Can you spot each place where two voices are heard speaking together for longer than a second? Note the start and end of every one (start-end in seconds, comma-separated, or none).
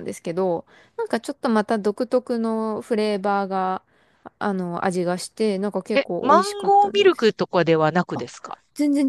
5.9-7.3